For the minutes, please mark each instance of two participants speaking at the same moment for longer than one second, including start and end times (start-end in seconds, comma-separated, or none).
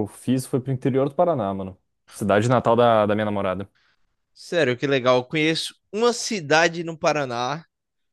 none